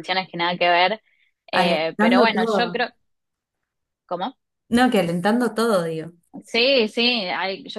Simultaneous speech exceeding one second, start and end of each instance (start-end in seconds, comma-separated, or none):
1.5-2.8